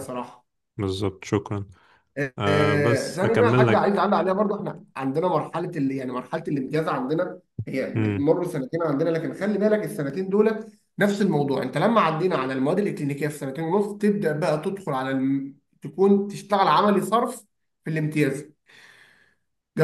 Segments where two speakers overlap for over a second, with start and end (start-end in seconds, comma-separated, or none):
2.5-4.1